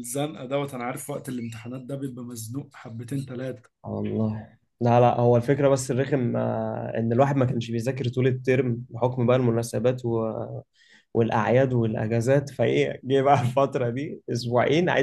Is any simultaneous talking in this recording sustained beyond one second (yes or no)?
no